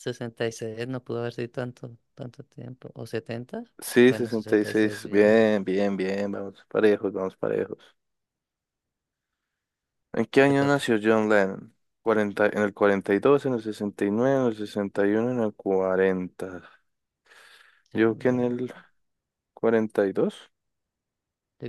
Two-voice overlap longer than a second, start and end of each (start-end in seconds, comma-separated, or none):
4.1-5.4